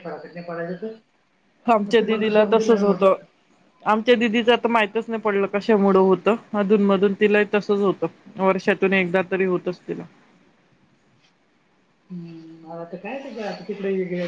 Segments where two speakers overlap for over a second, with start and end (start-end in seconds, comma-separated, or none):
1.8-3.1